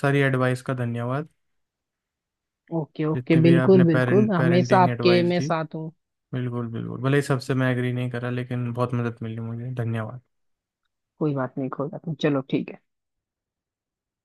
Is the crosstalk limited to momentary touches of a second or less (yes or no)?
no